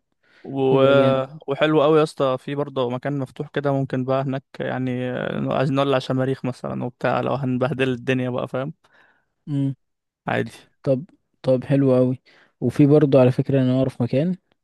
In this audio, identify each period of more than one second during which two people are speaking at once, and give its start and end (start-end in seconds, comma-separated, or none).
none